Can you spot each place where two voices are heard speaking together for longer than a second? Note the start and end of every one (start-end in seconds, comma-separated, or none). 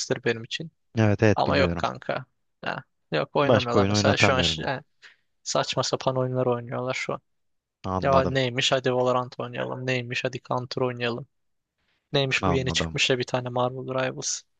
3.4-4.7